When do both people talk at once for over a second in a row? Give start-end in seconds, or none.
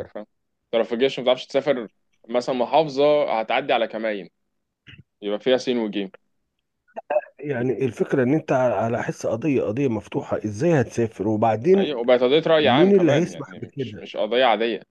12.6-14.1